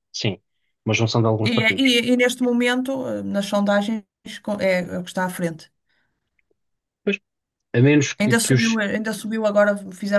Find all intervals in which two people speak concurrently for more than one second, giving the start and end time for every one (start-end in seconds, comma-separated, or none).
none